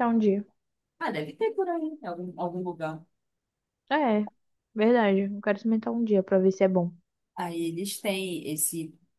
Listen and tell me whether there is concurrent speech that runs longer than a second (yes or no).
no